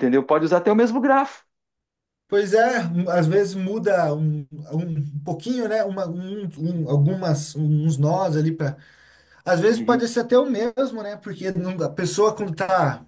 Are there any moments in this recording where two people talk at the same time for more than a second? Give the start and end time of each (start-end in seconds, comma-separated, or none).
none